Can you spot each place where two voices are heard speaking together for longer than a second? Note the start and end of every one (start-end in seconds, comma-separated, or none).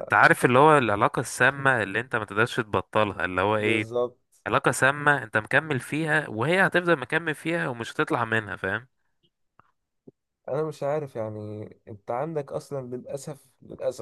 none